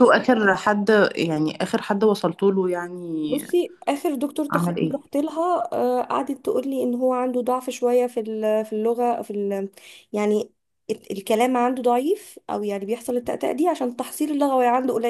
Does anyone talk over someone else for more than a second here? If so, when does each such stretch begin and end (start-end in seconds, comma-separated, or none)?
none